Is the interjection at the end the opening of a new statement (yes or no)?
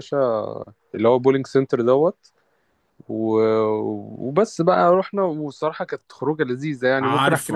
yes